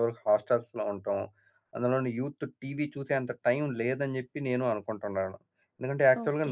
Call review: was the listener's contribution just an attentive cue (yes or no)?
yes